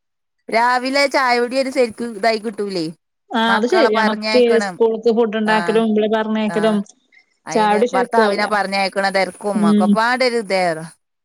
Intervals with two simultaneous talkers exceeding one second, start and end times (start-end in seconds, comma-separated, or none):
none